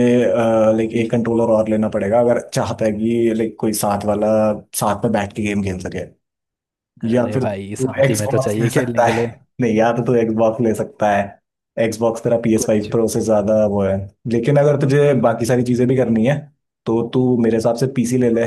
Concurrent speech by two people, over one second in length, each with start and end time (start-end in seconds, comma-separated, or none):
7.1-9.2